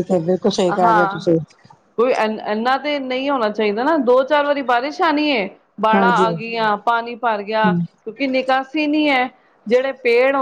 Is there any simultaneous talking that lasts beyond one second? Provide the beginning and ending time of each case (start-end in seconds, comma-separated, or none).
none